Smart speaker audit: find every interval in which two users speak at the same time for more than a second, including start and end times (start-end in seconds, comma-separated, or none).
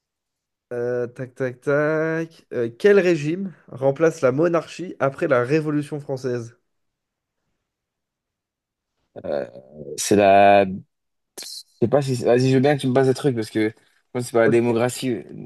none